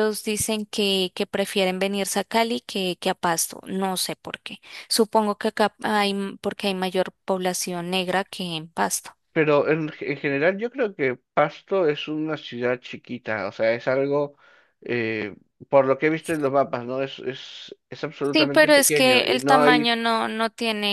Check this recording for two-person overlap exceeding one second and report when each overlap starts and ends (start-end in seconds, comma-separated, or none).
18.3-20.0